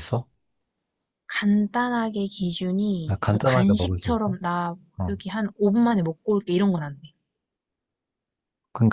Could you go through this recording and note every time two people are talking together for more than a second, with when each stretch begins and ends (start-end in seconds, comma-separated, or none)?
3.1-4.4